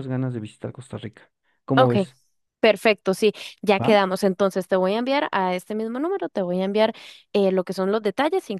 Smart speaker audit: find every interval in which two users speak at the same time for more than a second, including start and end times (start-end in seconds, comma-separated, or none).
none